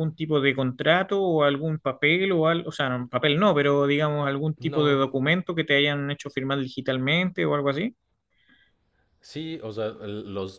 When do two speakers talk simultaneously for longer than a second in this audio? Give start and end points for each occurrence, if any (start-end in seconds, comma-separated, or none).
none